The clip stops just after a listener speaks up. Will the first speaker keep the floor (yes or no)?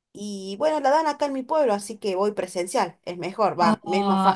no